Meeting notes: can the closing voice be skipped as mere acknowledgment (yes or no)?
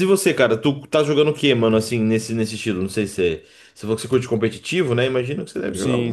no